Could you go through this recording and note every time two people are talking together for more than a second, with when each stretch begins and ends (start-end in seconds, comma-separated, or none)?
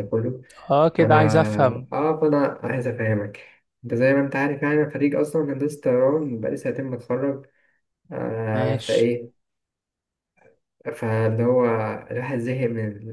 none